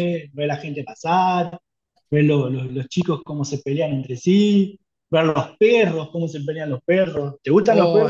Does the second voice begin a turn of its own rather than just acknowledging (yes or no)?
yes